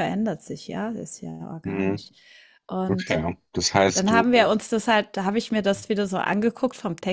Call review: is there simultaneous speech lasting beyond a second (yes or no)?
no